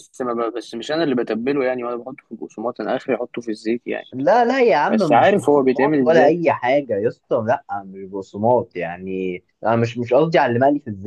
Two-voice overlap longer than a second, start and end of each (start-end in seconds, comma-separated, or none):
4.9-6.3